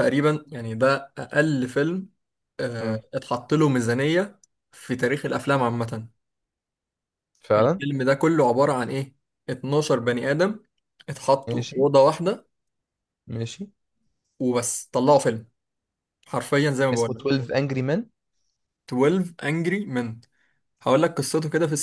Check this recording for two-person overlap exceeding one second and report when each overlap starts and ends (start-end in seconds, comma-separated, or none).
none